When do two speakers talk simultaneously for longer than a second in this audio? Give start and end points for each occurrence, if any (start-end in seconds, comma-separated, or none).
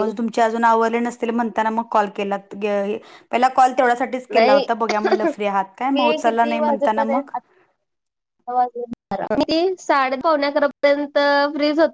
5.9-7.3